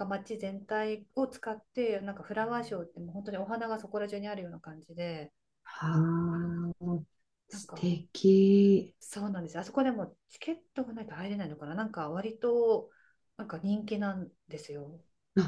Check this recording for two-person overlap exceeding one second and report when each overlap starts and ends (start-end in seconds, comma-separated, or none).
none